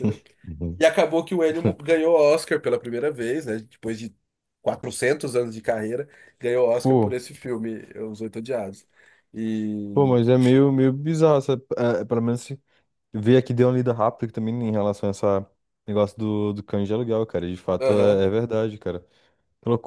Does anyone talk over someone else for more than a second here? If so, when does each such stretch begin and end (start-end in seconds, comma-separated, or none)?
none